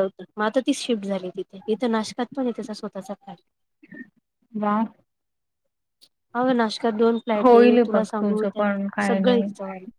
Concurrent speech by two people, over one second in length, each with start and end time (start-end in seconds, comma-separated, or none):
7.4-9.4